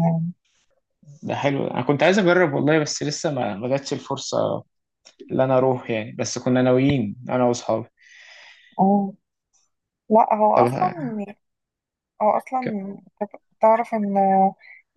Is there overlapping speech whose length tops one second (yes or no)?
no